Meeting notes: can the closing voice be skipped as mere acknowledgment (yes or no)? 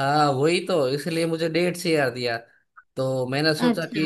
yes